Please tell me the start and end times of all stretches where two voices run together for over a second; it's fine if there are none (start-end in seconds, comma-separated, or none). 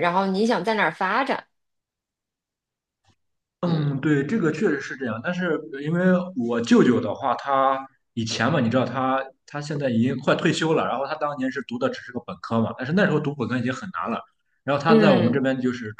none